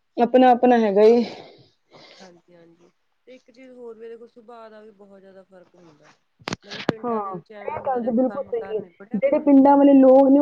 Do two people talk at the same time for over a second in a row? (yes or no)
yes